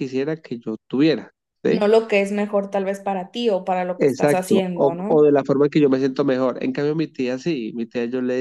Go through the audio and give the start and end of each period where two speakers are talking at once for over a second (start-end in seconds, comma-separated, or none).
4.0-5.3